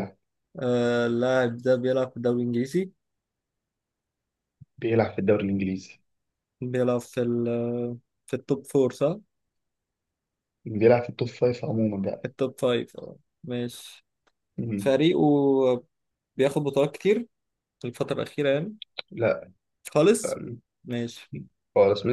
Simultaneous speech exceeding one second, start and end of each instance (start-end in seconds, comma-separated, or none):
none